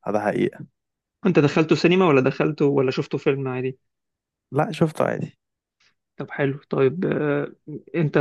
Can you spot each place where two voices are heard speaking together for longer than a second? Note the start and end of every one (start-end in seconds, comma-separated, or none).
none